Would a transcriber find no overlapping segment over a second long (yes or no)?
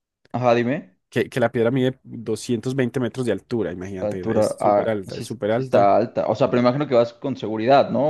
no